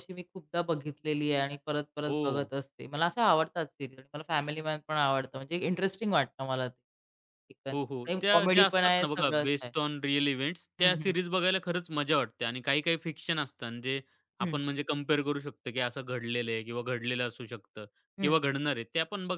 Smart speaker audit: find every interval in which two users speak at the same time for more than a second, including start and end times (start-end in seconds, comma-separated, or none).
7.7-9.7